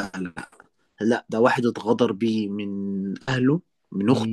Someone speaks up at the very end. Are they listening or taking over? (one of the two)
listening